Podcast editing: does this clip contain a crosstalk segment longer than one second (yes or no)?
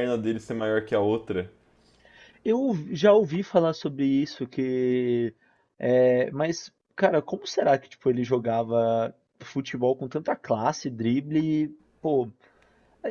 no